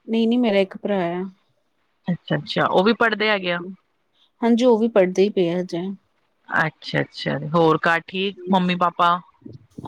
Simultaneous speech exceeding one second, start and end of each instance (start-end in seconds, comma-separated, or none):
none